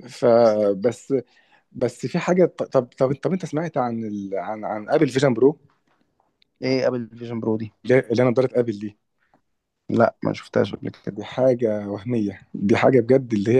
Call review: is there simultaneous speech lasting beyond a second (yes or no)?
no